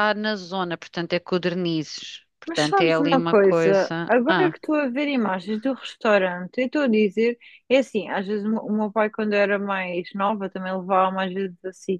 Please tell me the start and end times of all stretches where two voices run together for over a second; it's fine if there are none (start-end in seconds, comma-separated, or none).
2.5-4.5